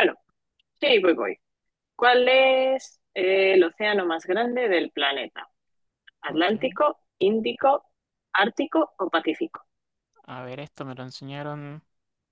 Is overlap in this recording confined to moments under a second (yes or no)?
yes